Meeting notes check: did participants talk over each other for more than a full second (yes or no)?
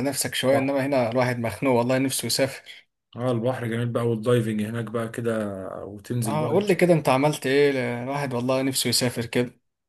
no